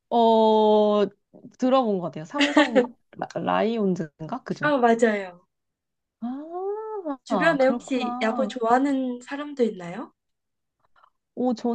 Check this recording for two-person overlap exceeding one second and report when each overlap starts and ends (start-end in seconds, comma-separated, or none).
7.3-8.5